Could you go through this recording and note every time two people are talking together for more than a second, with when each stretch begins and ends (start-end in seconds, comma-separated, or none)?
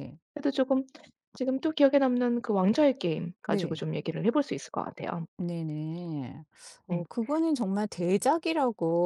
none